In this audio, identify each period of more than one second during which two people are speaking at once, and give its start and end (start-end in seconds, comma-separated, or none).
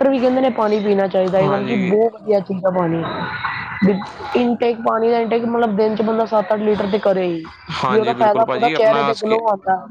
7.9-9.4